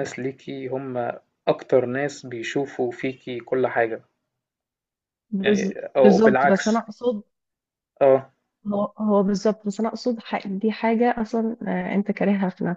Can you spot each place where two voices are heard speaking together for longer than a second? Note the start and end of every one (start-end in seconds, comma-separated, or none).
5.4-6.8